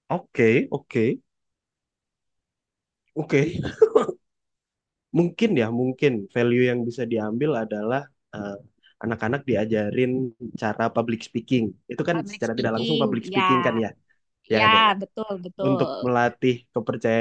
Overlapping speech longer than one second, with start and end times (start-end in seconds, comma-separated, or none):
12.1-13.8